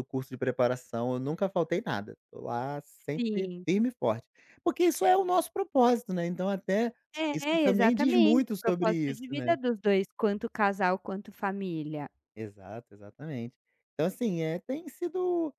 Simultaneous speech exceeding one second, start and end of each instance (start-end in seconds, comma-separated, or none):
7.3-9.6